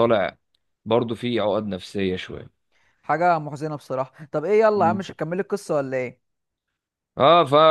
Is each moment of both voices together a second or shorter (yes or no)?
yes